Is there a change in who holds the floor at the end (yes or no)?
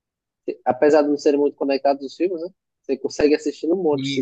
yes